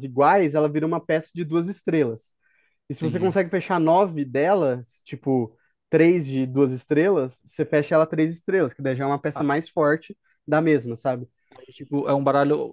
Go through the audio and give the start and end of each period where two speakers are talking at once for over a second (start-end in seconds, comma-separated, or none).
none